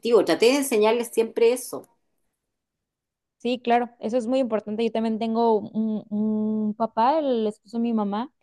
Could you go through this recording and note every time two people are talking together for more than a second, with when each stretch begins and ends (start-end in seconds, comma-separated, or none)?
none